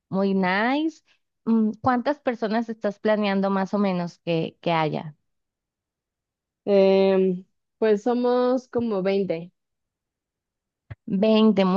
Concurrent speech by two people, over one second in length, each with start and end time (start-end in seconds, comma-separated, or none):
none